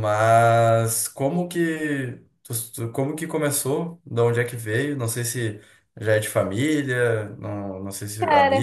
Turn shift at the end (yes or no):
no